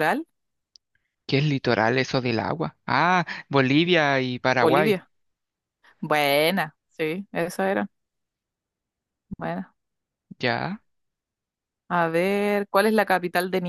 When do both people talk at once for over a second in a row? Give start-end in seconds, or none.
none